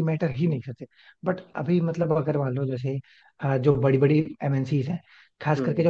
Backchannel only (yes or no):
yes